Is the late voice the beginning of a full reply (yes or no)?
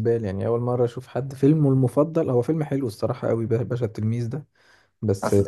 no